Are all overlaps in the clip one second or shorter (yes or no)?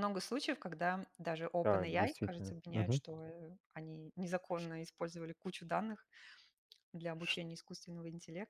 no